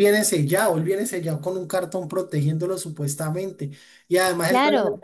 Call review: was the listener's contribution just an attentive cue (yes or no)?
yes